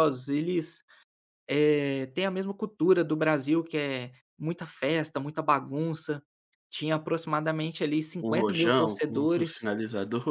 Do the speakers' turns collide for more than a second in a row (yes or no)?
yes